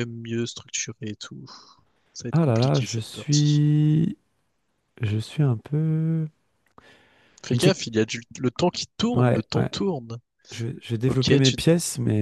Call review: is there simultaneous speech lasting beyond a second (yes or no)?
yes